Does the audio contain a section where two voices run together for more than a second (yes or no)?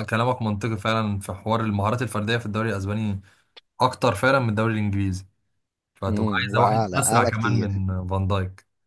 yes